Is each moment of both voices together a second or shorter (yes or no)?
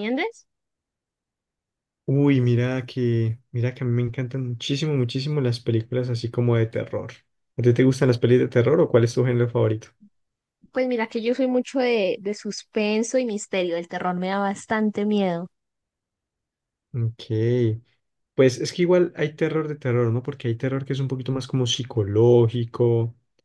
yes